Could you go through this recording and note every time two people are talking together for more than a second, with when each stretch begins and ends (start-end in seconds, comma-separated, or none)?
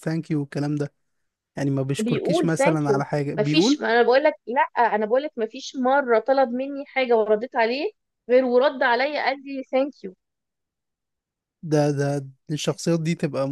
2.0-3.8